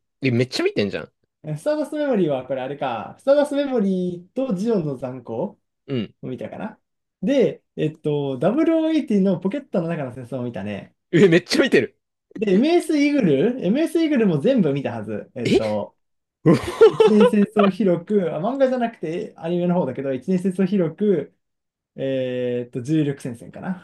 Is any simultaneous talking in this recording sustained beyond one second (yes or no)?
no